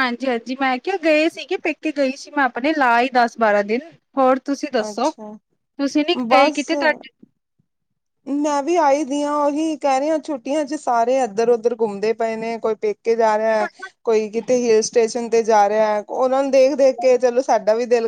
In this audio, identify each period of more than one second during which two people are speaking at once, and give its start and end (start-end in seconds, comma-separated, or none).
none